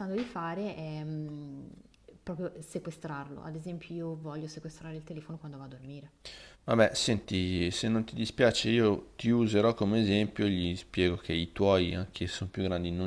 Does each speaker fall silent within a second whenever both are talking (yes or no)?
yes